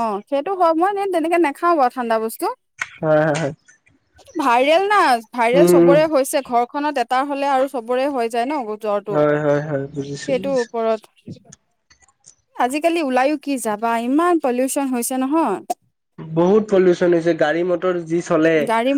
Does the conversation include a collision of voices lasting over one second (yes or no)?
yes